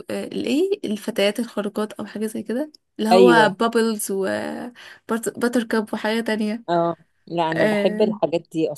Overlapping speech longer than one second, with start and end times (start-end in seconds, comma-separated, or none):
none